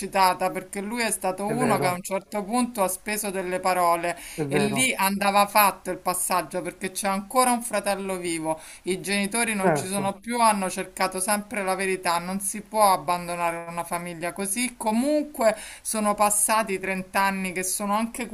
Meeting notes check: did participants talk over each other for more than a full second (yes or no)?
no